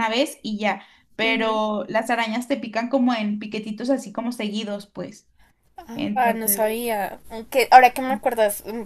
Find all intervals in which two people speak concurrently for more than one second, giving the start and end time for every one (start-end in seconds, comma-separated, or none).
none